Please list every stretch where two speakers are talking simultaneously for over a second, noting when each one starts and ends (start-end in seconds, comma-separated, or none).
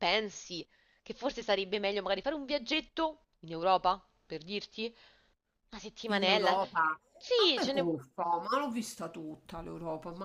none